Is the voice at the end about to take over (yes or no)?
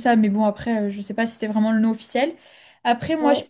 no